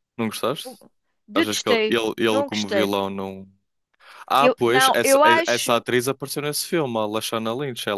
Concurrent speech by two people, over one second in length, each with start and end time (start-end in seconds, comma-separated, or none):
1.3-3.0, 4.4-5.8